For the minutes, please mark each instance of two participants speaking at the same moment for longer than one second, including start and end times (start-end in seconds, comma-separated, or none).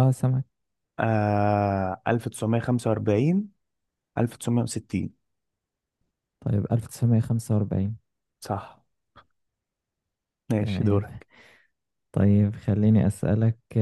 none